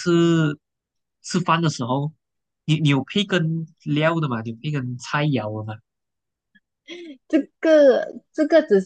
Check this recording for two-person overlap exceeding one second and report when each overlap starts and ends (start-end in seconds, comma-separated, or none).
none